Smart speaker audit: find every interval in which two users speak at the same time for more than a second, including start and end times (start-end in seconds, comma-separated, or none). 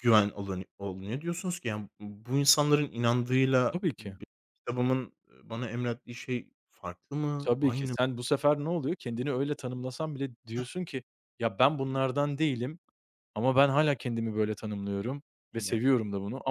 none